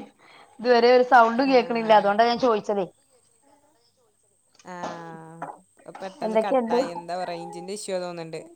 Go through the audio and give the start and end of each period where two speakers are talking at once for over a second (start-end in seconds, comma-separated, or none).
none